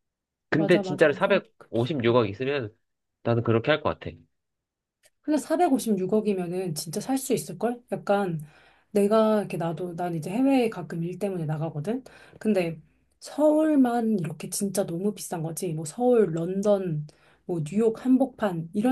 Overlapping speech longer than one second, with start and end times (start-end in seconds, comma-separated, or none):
0.6-1.9